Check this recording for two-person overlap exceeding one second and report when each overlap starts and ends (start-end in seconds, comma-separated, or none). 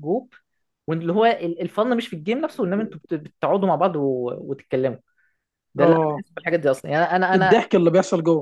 none